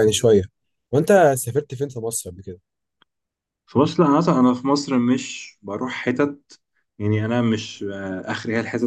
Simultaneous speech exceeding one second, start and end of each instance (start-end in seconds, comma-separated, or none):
none